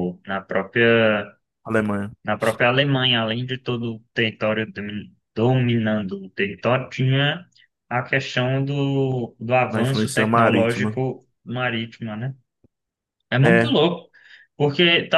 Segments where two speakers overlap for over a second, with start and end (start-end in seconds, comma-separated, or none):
9.7-11.0